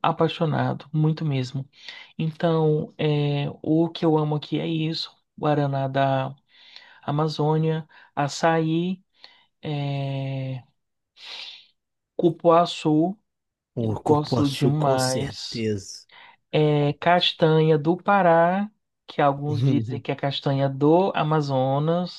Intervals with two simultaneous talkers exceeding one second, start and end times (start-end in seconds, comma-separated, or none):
13.8-15.7